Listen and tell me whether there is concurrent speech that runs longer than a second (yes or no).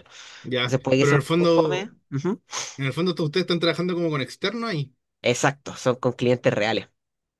yes